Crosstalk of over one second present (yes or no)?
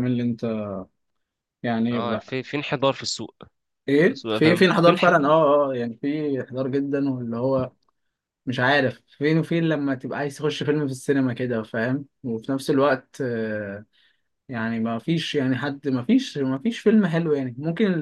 yes